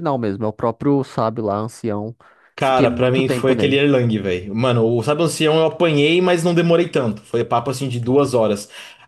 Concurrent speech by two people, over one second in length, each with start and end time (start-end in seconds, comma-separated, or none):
2.6-3.8